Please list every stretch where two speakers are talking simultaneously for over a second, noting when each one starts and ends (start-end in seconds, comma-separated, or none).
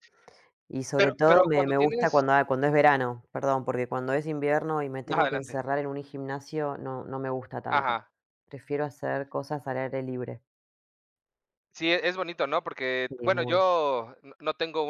0.9-2.2